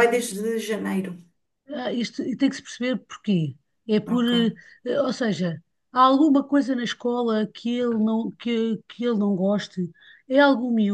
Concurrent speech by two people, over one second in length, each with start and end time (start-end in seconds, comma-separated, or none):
none